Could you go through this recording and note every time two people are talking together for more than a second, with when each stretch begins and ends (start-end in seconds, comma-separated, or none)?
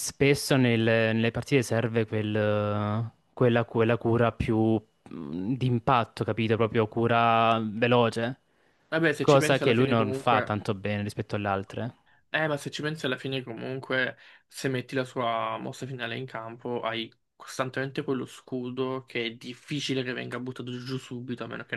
9.2-10.5